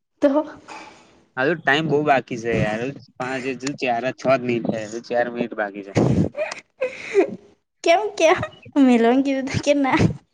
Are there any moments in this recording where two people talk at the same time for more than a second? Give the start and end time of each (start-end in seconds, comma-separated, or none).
none